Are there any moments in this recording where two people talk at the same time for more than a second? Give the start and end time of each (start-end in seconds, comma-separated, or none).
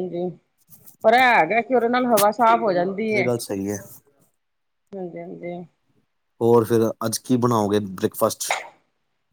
none